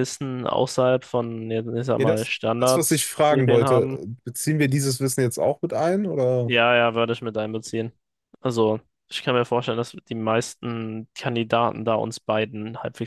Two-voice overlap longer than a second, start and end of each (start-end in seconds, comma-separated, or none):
2.0-3.9